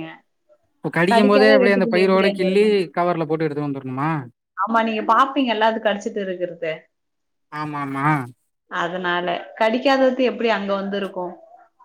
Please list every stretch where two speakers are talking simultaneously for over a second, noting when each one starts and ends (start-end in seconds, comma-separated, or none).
1.1-2.7